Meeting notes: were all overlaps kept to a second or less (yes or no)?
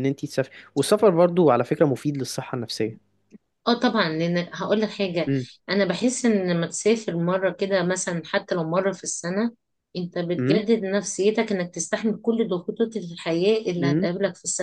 yes